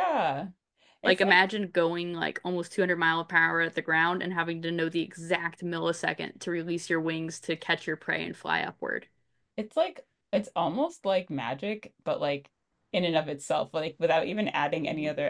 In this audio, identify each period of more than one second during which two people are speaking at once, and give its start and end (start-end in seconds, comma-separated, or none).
none